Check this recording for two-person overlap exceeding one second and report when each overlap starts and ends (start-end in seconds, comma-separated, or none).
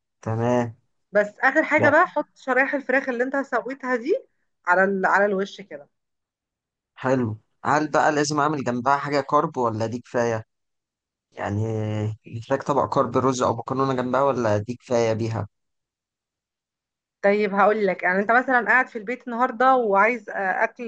none